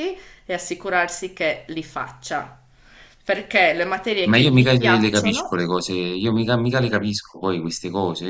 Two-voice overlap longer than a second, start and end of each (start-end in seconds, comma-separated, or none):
4.2-5.6